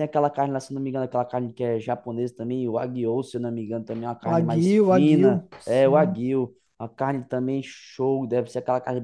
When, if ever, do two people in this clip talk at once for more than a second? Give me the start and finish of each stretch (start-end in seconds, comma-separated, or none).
4.2-6.2